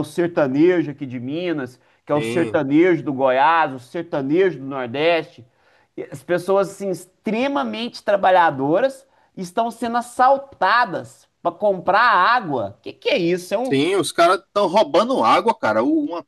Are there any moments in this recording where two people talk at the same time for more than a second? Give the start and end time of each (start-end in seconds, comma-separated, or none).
none